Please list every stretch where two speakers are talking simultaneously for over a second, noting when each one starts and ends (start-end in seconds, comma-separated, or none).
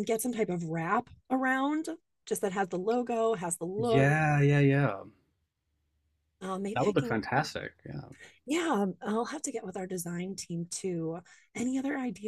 none